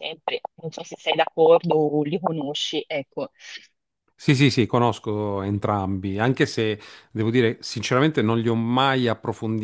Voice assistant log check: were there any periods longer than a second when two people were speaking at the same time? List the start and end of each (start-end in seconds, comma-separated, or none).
none